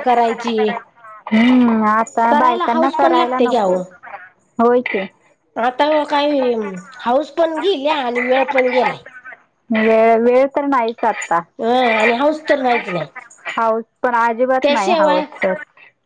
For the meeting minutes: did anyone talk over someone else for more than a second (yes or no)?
yes